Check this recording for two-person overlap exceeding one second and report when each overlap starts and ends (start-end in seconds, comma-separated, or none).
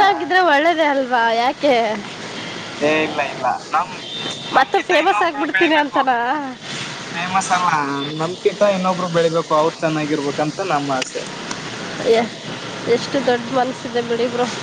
4.6-6.0